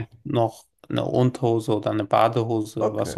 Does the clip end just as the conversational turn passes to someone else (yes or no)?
yes